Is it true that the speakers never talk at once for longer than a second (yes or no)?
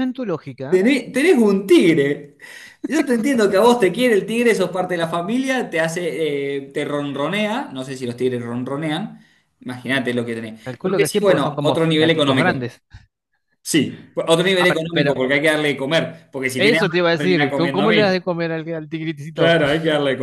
no